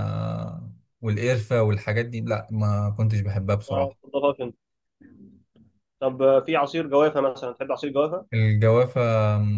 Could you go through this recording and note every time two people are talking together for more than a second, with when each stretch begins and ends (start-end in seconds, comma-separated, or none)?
none